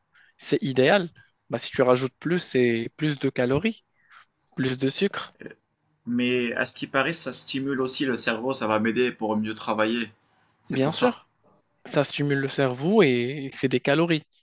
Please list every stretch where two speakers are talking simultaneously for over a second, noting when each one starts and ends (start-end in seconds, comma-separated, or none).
none